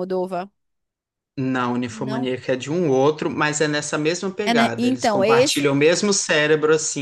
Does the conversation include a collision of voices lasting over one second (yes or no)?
yes